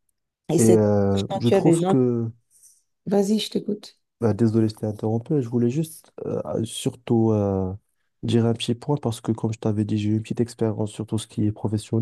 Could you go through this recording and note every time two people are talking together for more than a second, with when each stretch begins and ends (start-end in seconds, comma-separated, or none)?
0.6-2.0